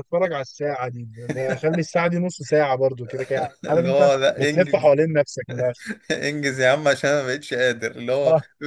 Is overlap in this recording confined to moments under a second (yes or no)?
no